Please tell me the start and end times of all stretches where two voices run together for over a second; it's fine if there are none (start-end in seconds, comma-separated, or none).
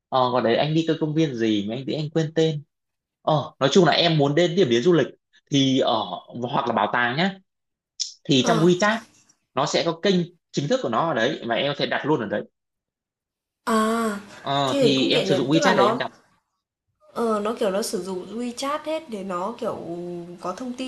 14.7-16.0